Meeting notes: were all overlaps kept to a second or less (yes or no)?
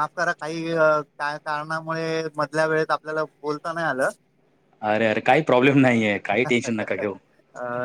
yes